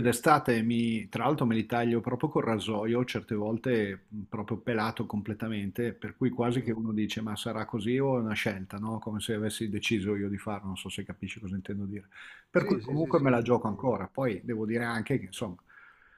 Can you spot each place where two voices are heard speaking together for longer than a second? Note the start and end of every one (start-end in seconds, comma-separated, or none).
12.6-14.0